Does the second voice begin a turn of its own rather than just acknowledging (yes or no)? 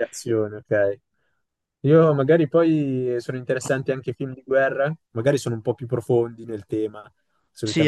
yes